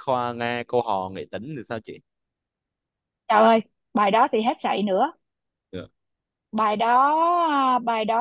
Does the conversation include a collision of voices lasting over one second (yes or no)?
no